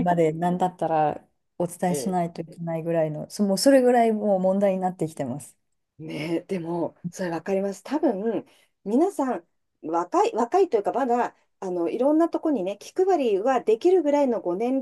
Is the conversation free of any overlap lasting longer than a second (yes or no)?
yes